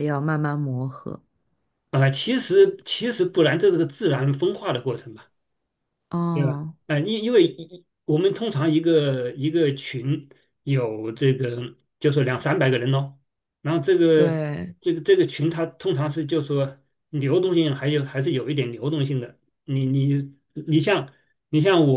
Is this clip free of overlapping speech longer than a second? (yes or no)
yes